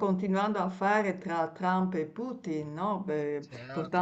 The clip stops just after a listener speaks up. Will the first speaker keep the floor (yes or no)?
no